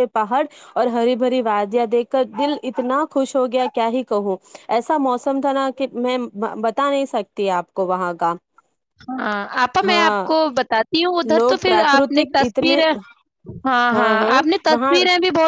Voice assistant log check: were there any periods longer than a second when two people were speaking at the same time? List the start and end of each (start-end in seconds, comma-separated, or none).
11.3-12.7